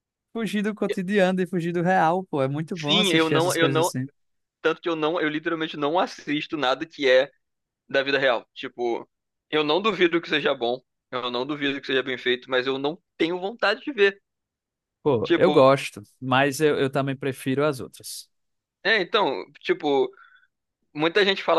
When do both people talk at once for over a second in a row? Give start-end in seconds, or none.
2.7-3.9